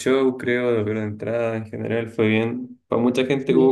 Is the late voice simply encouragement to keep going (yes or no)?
yes